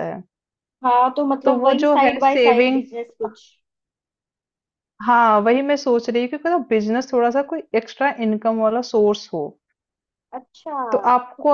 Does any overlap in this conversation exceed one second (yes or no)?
yes